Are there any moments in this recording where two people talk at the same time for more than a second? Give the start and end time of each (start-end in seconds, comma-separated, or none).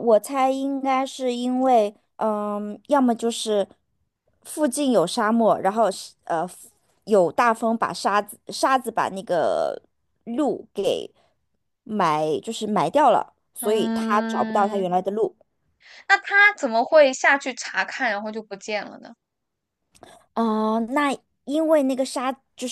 13.6-14.9